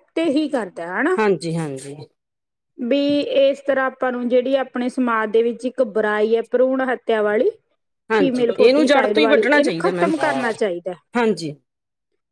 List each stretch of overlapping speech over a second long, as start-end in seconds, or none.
8.2-10.1